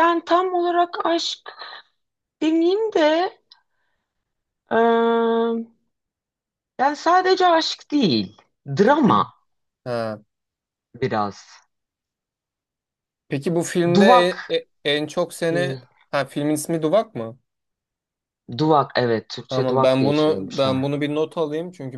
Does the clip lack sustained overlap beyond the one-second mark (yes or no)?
no